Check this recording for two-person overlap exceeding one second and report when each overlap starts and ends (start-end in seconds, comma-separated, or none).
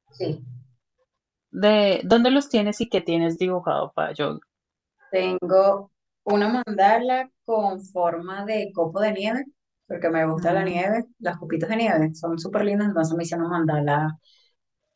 none